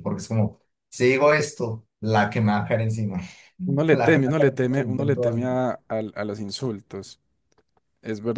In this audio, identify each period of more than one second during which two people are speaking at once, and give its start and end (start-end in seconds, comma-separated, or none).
3.6-5.5